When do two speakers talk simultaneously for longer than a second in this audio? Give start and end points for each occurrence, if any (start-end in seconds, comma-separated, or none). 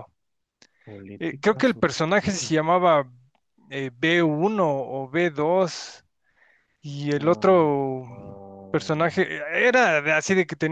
1.2-2.5